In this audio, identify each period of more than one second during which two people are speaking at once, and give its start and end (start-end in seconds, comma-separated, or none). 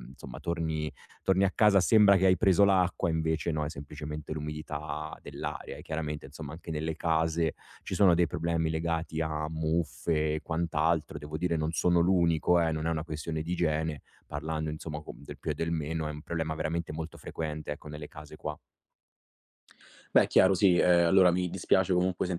none